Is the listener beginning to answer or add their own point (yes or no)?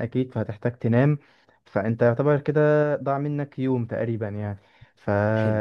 no